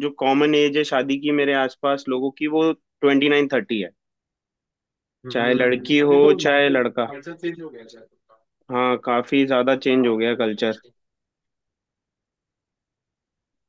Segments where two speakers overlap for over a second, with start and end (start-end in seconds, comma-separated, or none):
5.3-7.1, 9.3-10.8